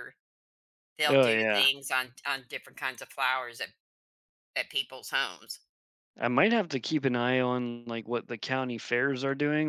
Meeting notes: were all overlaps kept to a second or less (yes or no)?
yes